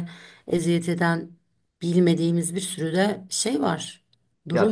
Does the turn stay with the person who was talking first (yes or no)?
no